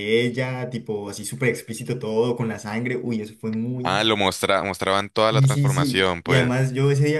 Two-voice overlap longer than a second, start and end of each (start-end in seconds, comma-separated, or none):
5.3-6.6